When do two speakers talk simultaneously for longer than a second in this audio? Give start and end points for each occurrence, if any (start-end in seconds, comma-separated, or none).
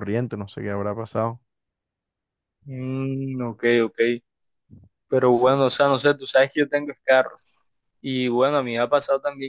none